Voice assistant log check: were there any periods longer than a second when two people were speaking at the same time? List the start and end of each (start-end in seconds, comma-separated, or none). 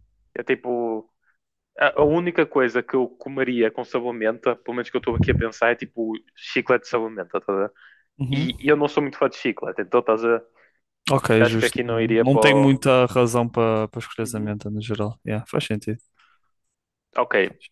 11.4-12.8